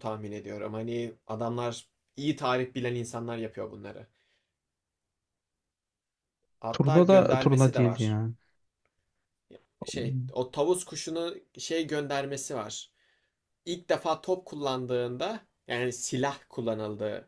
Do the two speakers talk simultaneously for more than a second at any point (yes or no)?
yes